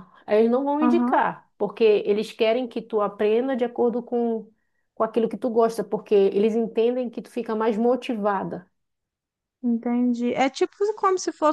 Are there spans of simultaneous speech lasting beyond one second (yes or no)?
no